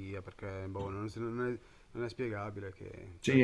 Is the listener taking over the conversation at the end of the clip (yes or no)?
yes